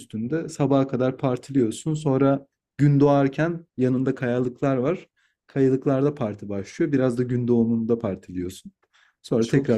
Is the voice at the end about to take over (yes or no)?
no